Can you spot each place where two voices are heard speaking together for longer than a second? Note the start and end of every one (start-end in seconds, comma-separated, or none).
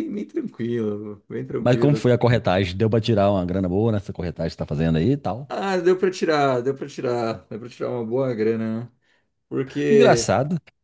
none